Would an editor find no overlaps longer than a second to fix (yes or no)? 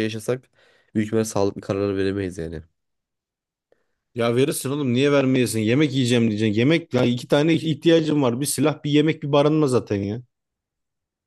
yes